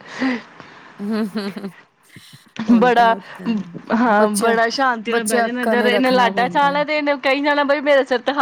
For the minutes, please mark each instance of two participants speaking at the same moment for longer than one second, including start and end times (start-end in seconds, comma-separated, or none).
5.4-6.8